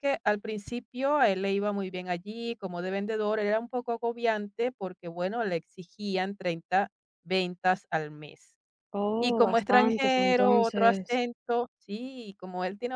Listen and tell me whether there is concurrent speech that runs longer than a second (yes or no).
yes